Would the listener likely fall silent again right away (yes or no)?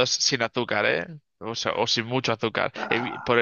yes